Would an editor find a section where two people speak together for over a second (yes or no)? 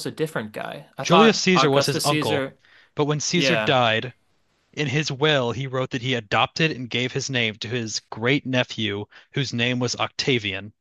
yes